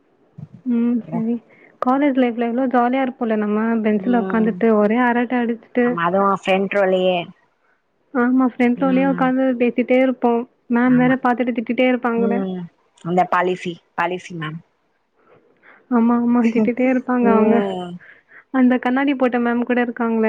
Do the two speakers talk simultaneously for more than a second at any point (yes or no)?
no